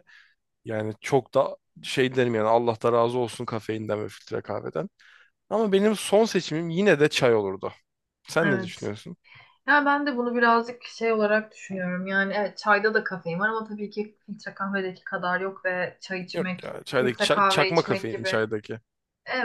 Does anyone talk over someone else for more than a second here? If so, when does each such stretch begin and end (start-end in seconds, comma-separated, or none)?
16.3-18.4